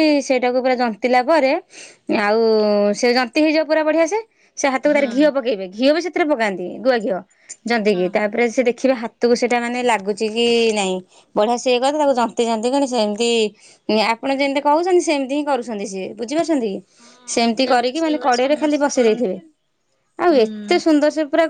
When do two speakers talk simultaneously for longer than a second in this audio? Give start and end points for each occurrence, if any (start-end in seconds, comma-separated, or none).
17.0-19.4